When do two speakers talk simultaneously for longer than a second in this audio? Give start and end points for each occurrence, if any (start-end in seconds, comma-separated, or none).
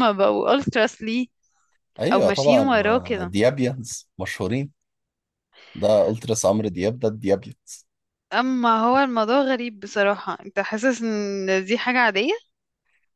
2.1-3.3